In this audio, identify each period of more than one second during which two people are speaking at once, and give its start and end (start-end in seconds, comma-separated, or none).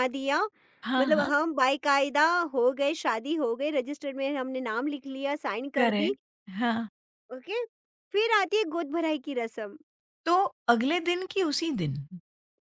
none